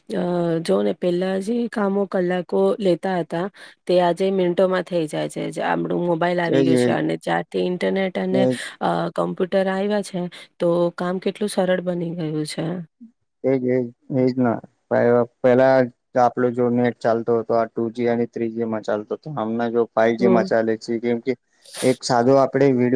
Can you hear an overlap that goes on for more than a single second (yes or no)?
no